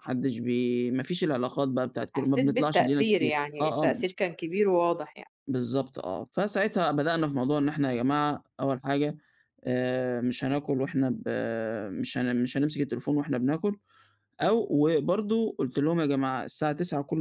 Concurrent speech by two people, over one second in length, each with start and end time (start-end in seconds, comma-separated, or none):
2.2-4.0